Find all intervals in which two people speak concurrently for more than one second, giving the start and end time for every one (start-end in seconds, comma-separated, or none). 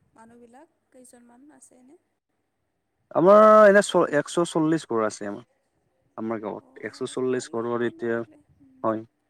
6.6-8.4